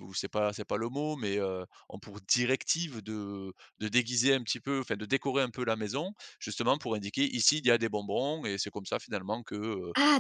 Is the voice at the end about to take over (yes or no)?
yes